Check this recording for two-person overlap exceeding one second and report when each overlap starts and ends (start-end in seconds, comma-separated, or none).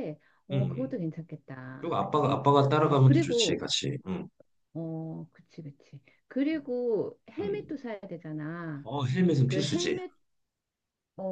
1.8-3.7